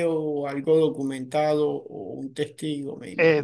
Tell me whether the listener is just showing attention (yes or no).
no